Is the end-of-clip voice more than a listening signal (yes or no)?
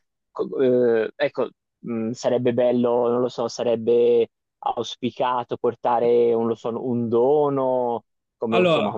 no